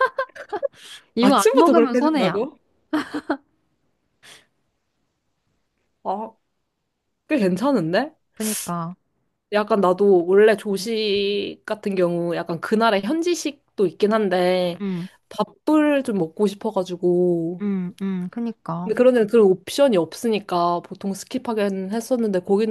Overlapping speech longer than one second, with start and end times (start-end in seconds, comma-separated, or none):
1.2-2.5